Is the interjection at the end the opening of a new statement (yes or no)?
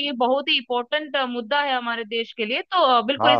no